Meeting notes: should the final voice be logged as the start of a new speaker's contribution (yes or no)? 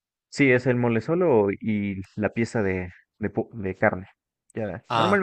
no